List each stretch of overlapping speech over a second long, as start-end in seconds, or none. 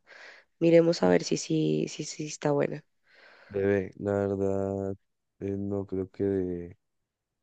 none